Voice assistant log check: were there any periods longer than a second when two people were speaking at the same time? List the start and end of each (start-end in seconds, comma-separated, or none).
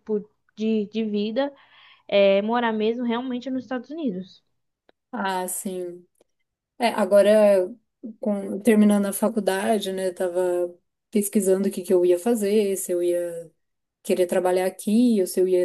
none